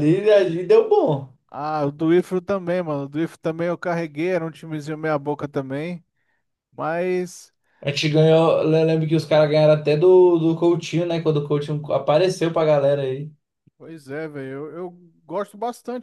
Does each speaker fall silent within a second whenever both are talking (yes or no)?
yes